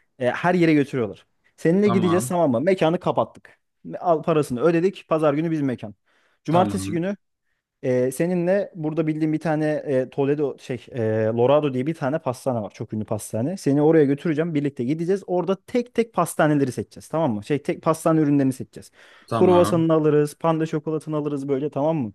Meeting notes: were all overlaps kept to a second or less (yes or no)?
yes